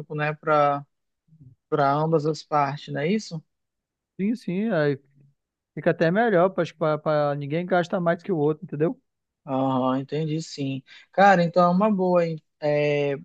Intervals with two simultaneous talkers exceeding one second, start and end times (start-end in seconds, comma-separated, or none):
none